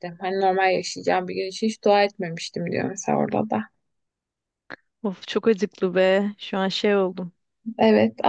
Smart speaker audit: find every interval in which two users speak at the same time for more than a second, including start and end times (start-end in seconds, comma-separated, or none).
none